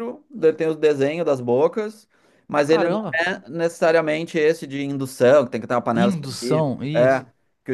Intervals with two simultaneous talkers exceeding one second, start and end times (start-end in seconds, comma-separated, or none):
5.9-7.2